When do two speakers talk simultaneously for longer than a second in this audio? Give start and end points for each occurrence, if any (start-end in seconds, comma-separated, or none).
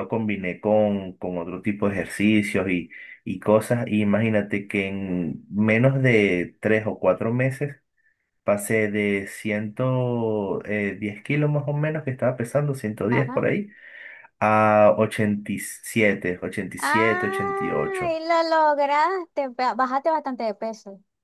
16.8-18.2